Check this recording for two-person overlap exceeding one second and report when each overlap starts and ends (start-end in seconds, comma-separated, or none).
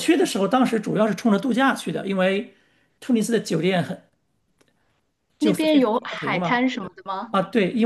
5.4-6.6